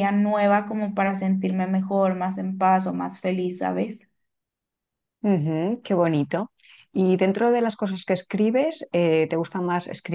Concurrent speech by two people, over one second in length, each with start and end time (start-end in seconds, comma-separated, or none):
none